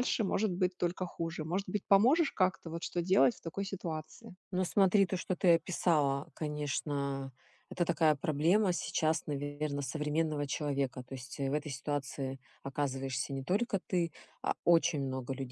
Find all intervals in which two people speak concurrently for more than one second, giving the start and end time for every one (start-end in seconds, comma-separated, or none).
none